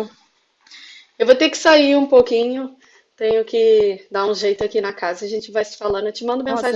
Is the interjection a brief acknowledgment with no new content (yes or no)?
no